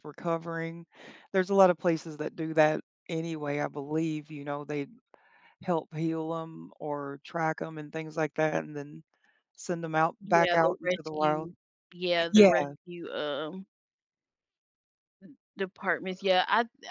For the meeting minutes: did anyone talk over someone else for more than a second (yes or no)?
yes